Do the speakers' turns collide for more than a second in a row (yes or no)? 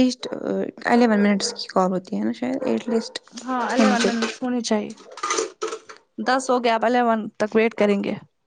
no